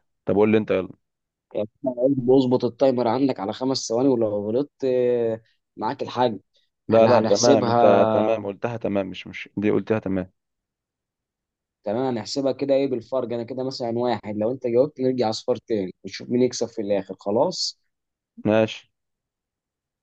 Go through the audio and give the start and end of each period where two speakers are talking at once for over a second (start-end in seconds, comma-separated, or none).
6.9-8.3